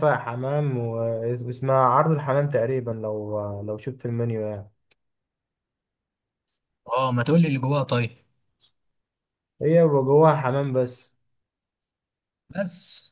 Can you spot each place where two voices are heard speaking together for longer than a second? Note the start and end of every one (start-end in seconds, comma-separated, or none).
none